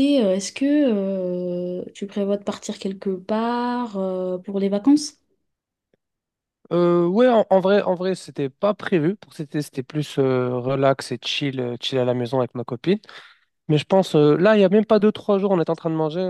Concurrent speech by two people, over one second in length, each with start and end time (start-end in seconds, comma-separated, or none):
none